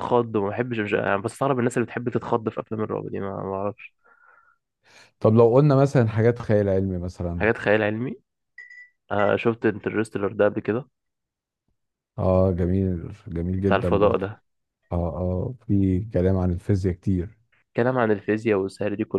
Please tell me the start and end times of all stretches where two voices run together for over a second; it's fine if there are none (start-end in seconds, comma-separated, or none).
none